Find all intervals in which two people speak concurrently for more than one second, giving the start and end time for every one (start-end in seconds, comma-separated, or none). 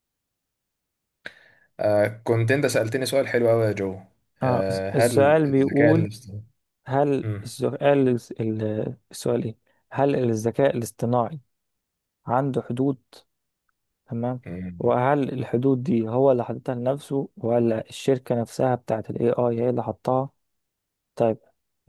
4.4-6.1